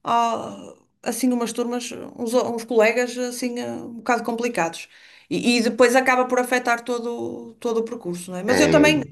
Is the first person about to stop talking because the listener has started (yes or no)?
no